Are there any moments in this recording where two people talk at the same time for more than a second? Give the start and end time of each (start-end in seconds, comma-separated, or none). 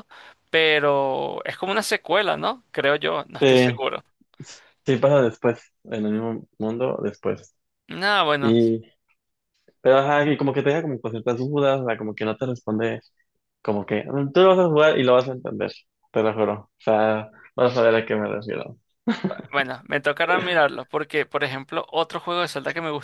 none